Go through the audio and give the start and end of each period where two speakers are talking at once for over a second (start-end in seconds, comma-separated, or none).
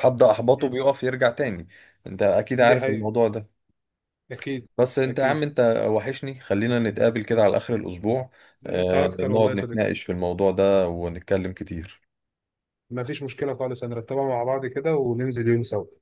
8.7-9.9